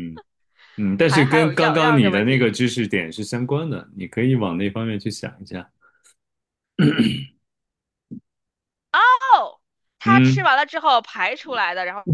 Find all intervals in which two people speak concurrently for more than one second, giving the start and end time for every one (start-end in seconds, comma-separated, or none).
1.1-2.5